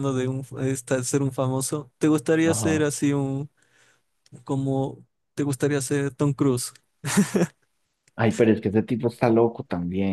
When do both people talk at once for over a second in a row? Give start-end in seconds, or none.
none